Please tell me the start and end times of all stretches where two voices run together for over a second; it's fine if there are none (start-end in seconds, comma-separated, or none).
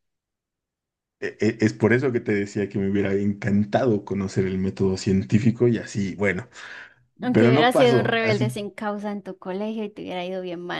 7.3-8.6